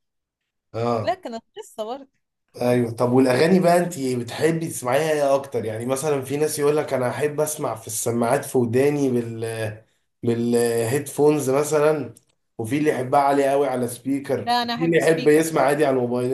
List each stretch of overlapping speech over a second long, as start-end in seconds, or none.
14.4-15.7